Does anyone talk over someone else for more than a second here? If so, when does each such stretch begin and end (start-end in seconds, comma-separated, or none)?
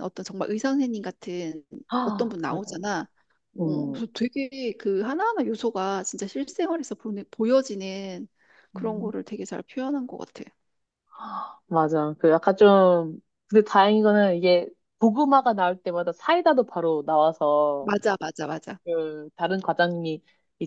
none